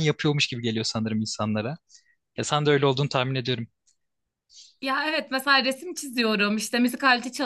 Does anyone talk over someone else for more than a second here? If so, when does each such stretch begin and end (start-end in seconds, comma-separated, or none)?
none